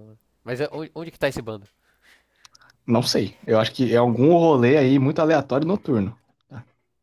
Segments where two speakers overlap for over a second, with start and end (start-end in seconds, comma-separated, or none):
none